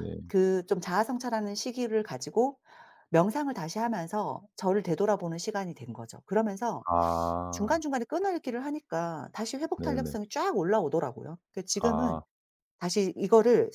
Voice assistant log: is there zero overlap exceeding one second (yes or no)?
yes